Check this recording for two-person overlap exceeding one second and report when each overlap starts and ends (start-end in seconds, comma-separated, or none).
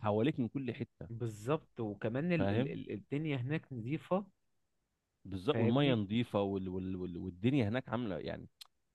none